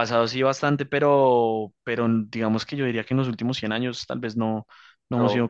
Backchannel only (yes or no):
yes